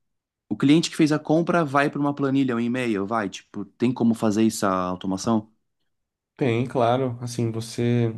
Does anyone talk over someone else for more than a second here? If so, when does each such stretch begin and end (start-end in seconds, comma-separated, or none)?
none